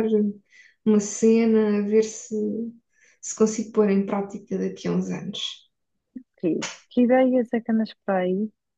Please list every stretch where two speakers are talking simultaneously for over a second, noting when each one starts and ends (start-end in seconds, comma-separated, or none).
none